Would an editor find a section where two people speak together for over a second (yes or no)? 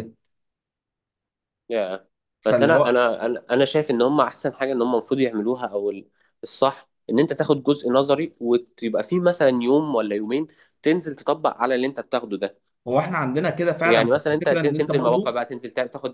yes